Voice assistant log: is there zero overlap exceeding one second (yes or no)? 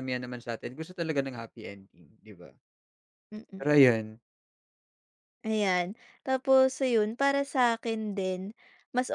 yes